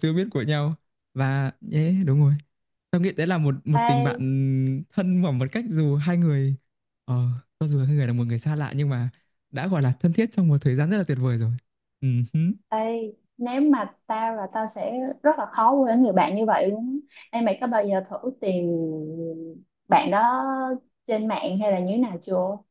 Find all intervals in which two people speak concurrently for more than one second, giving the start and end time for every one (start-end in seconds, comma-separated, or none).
none